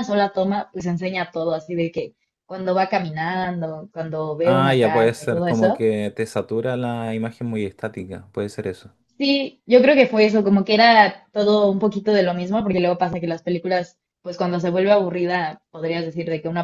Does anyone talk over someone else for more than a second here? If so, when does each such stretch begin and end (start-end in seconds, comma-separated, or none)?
4.4-5.9